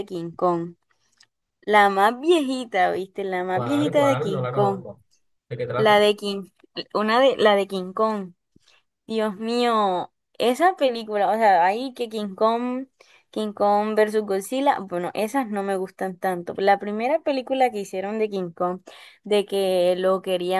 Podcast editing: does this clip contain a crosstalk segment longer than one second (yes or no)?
yes